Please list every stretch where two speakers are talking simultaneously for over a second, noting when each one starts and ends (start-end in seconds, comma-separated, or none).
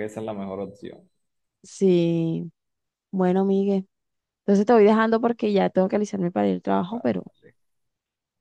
none